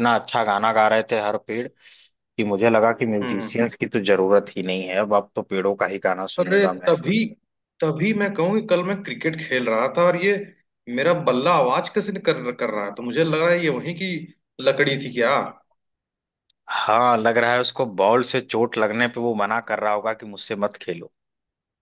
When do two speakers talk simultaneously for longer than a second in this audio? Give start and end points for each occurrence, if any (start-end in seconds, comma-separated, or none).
none